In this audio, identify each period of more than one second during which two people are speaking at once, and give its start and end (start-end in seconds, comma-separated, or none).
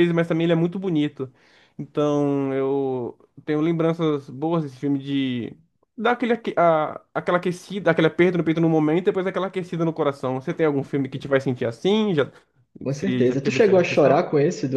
12.9-14.3